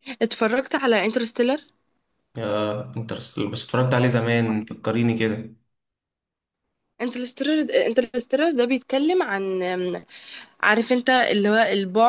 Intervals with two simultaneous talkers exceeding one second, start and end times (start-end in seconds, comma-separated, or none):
none